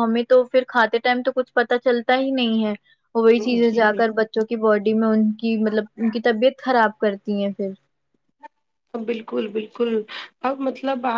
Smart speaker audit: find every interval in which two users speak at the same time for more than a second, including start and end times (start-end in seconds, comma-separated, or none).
none